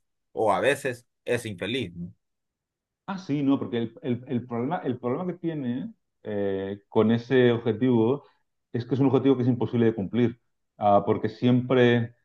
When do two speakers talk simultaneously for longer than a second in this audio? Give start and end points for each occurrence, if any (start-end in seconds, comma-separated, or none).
none